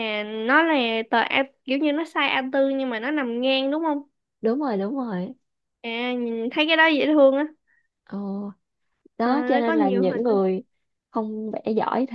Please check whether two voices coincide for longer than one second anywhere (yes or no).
yes